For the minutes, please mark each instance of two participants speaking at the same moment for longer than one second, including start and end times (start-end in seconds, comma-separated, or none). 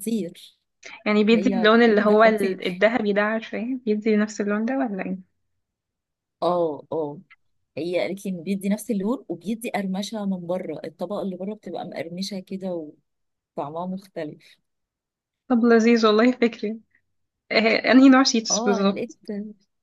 1.3-2.9